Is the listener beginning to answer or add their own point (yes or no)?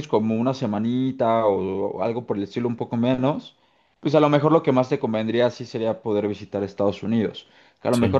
no